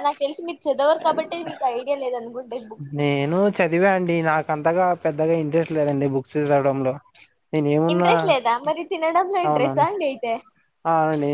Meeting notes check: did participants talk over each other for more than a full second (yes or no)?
no